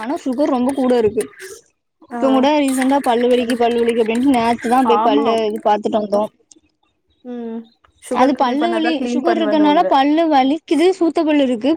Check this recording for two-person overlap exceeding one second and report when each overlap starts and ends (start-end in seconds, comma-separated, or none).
8.2-9.9